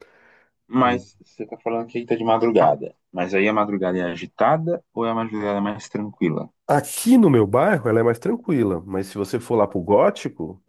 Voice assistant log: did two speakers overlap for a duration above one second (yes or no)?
no